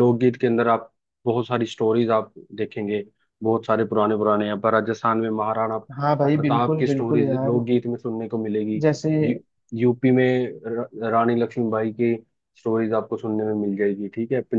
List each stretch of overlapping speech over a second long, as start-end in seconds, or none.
6.0-7.6